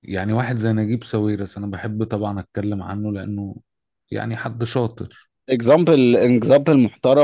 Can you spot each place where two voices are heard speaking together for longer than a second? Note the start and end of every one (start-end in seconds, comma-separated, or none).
none